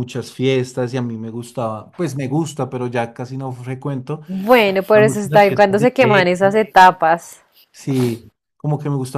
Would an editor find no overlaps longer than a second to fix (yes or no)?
no